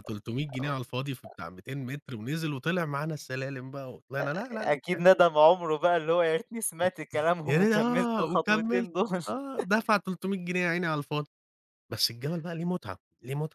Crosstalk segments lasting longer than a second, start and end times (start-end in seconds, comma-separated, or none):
7.5-8.9